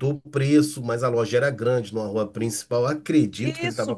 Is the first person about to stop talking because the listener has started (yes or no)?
yes